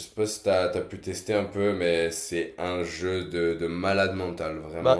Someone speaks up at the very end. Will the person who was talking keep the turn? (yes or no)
no